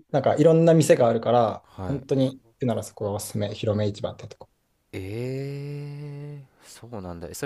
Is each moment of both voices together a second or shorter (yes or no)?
yes